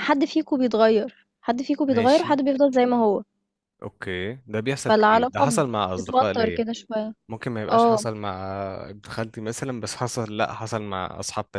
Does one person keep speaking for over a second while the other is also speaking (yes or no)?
yes